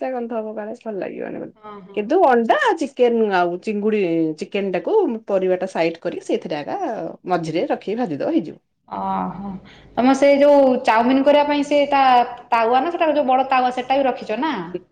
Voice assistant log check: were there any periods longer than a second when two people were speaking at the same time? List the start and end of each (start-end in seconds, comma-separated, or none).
none